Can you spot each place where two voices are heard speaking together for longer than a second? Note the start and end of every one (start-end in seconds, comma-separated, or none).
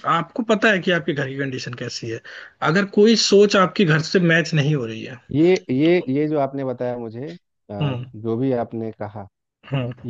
none